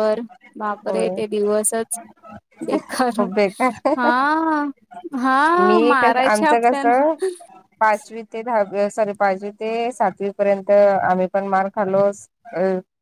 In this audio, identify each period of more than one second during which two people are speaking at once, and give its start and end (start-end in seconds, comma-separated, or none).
5.6-7.0